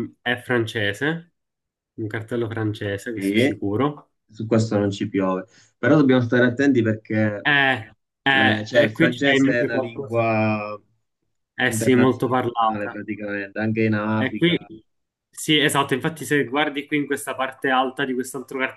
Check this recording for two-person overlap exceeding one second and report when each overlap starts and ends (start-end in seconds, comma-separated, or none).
8.3-10.3, 11.6-13.0